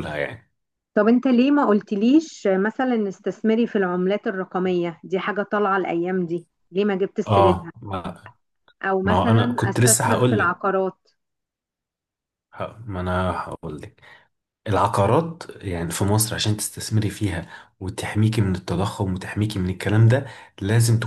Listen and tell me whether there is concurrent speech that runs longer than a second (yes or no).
yes